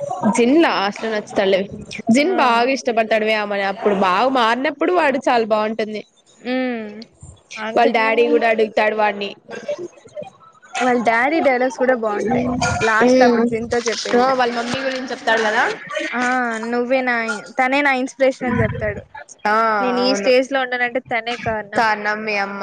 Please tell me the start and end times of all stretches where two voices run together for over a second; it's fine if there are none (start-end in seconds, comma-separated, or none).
13.0-14.3